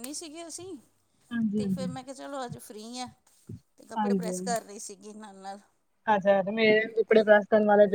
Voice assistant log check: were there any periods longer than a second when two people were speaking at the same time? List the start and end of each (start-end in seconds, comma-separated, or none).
none